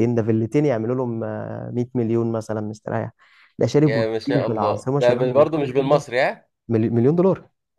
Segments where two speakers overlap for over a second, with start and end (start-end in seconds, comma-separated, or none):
3.8-6.0